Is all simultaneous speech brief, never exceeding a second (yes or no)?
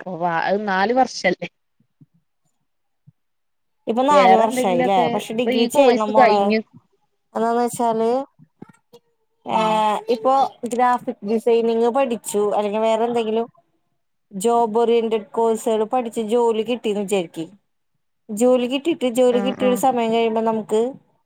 no